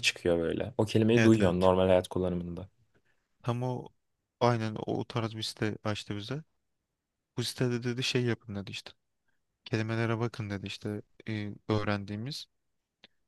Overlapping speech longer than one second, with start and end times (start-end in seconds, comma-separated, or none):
none